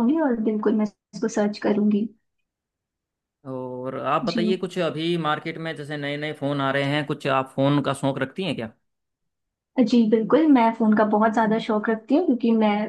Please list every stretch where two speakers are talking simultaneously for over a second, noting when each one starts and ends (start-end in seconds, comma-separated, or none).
none